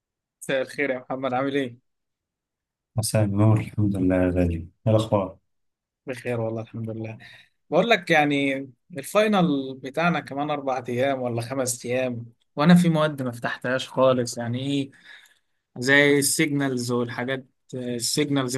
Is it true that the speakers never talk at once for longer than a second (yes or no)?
yes